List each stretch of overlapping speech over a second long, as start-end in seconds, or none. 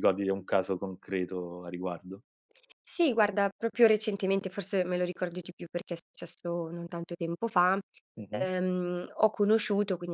none